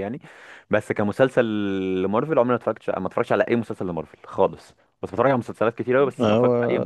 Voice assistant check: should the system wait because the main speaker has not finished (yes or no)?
yes